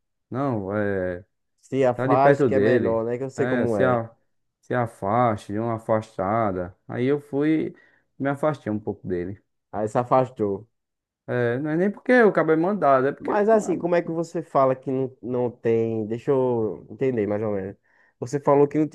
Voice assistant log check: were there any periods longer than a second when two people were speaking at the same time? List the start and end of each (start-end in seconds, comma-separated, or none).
1.9-4.0